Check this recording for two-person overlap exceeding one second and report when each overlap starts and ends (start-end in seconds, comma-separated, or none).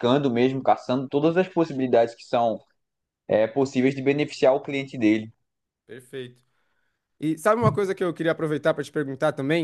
none